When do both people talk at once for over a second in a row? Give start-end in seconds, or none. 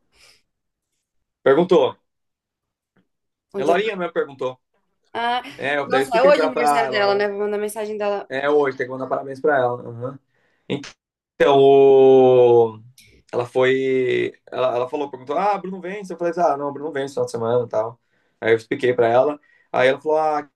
5.8-7.3